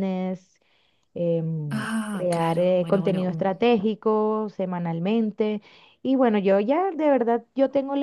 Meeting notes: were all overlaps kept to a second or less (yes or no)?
no